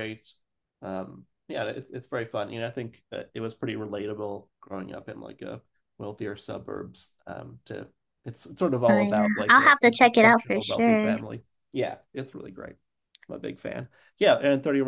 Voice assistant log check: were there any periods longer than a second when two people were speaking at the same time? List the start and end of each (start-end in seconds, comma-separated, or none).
8.9-11.1